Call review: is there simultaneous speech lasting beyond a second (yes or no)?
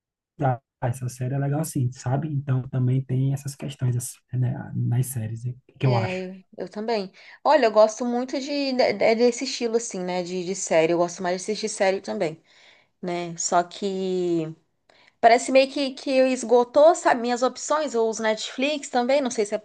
no